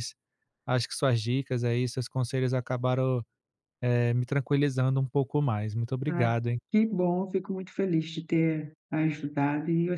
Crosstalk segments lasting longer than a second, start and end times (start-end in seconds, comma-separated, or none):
none